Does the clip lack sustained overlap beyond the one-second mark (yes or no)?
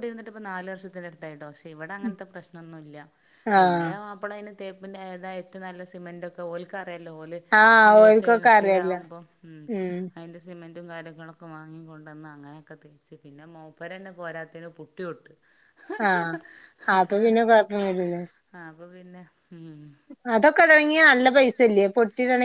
no